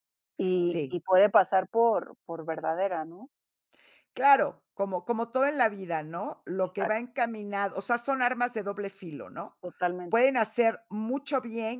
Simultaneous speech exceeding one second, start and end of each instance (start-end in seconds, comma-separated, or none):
none